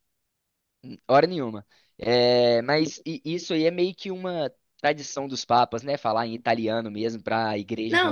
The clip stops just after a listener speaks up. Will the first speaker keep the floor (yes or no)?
no